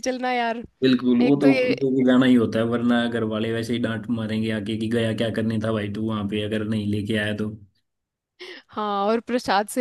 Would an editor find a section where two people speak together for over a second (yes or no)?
no